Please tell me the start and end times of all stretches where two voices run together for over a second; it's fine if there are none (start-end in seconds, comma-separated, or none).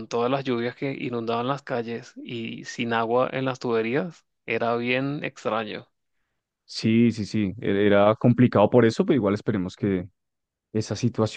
none